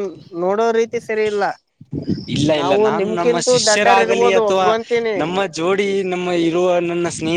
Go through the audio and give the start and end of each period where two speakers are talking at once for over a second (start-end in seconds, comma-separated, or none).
2.6-4.7